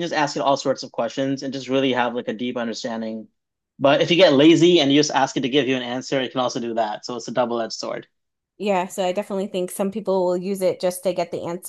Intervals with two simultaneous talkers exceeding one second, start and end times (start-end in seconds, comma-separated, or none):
none